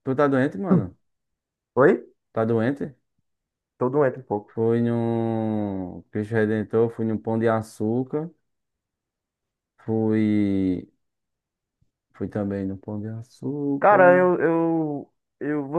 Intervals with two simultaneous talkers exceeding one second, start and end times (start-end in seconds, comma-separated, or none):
none